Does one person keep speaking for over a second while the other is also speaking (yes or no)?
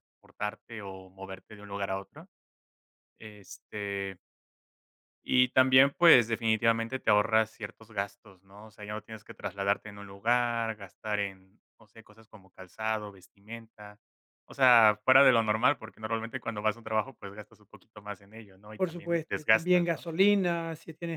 yes